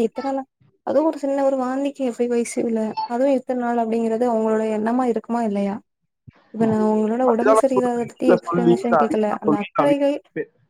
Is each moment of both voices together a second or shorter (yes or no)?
no